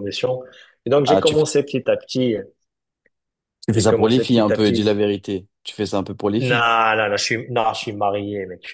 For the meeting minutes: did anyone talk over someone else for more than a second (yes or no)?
yes